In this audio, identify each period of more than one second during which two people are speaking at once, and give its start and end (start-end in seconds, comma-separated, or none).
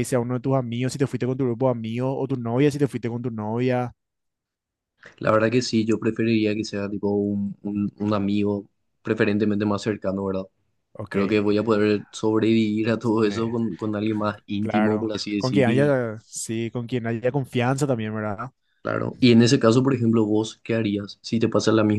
14.6-15.9